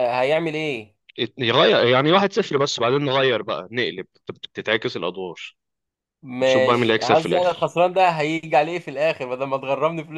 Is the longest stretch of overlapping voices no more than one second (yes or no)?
no